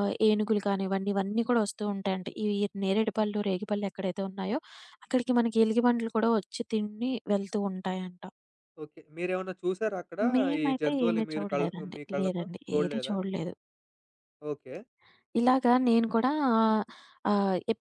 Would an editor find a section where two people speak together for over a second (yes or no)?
yes